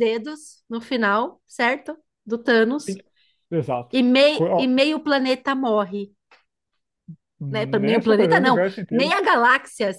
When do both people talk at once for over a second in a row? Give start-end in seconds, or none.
7.5-9.1